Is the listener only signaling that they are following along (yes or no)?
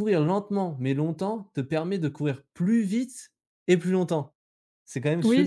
no